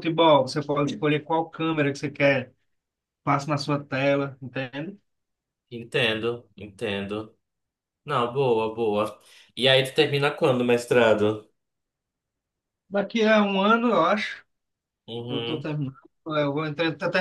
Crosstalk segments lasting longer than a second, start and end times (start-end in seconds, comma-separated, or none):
none